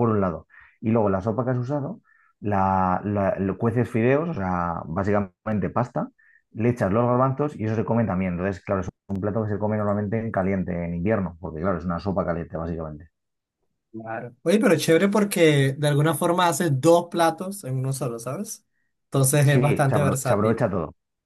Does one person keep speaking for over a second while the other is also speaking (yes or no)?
yes